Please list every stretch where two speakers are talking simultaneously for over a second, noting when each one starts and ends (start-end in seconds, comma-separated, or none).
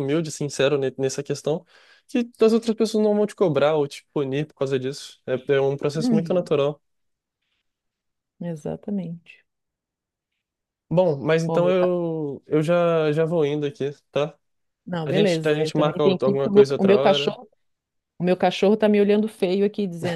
15.0-17.4